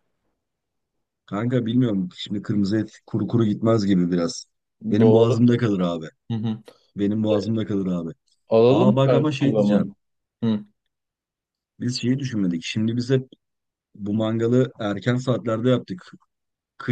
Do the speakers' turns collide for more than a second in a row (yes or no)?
yes